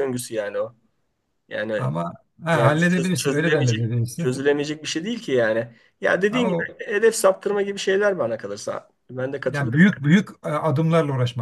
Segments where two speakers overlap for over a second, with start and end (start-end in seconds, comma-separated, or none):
2.5-4.4